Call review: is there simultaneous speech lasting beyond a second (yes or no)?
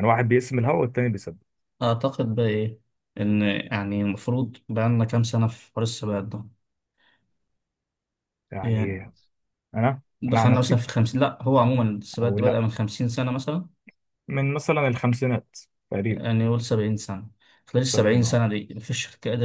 no